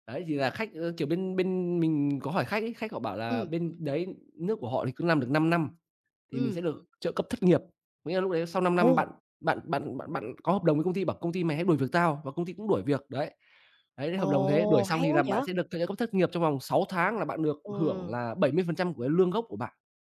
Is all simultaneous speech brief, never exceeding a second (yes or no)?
no